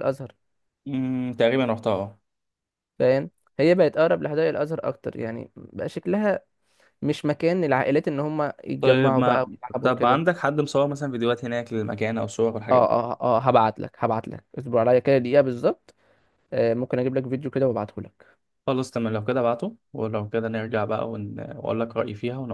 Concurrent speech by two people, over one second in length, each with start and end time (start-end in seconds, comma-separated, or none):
8.8-10.2